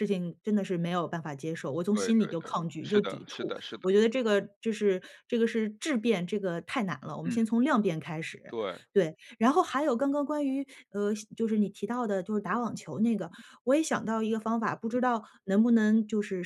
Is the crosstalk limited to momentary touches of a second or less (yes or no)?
no